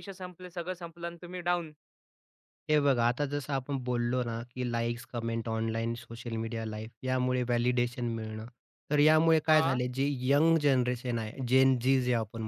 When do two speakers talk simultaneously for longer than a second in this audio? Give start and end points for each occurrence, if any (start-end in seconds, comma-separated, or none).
none